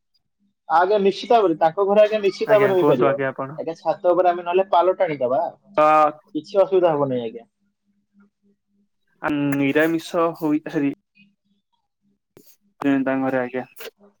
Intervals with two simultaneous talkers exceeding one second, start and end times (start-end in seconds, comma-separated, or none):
none